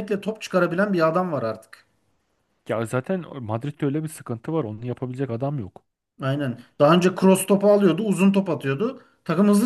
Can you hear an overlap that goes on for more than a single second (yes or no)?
no